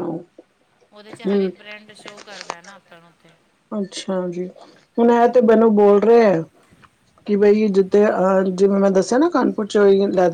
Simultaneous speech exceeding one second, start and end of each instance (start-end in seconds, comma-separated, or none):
none